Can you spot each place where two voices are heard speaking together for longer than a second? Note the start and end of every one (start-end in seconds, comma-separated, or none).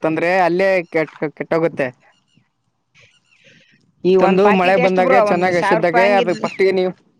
4.2-6.3